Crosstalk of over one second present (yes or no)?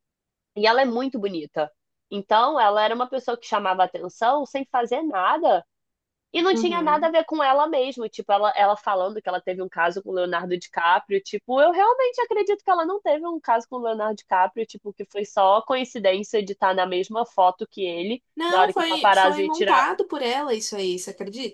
yes